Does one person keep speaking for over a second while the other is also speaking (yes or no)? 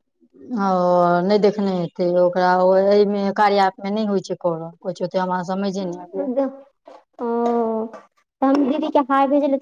no